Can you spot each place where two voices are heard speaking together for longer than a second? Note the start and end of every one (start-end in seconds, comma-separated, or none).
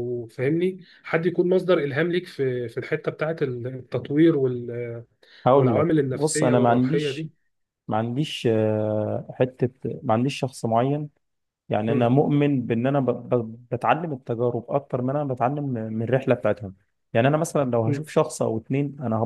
5.5-7.3